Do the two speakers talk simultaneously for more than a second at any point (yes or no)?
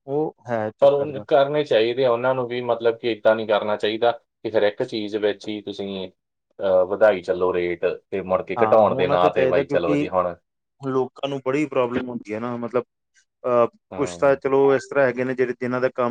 yes